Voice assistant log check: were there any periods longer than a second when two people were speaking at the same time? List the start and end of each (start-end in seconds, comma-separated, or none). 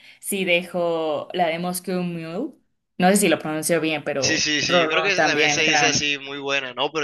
4.2-6.1